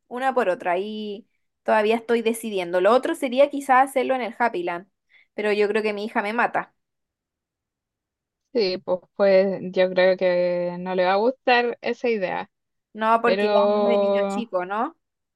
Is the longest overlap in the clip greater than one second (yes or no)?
yes